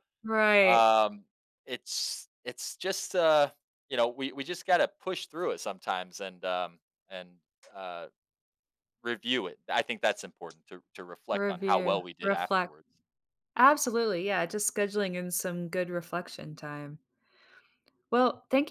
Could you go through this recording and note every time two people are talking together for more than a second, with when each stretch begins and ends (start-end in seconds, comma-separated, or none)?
11.3-12.7